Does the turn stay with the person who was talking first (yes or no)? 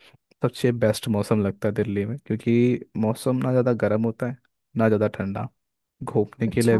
yes